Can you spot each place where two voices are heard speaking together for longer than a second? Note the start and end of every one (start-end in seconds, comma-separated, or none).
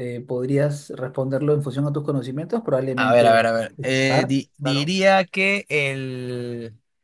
3.0-5.0